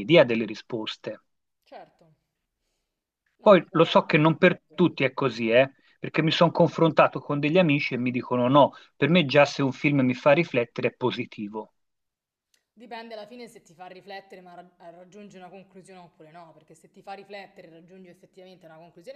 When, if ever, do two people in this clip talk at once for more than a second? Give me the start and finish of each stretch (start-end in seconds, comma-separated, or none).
3.4-4.9